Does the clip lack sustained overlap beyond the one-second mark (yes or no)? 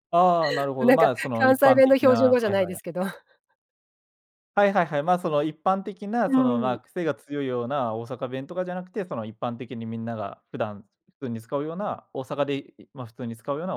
no